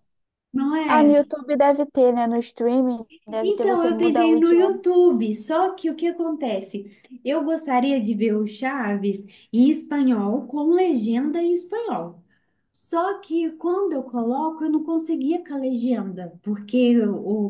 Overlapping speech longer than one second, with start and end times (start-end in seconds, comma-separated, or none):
3.4-4.8